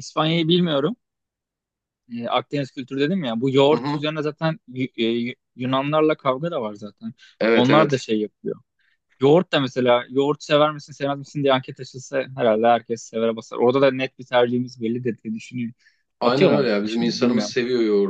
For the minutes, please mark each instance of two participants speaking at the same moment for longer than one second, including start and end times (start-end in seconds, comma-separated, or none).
16.2-17.6